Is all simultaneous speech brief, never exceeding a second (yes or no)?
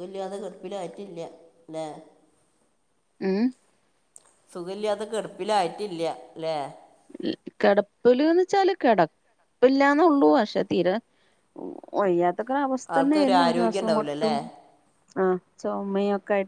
no